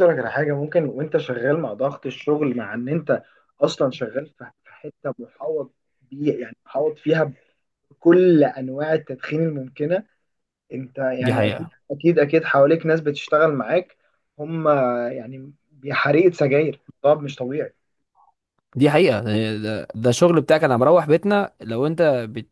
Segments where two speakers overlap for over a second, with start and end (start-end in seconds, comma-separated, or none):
none